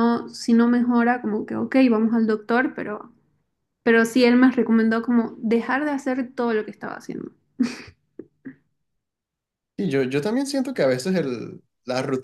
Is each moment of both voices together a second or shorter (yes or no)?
yes